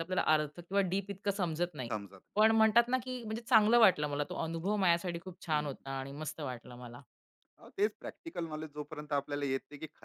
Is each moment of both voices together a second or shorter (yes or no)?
yes